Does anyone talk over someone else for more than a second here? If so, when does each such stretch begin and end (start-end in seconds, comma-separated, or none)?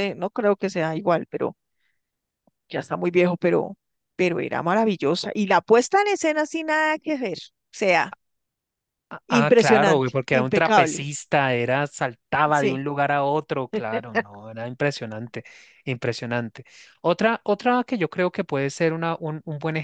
9.4-11.1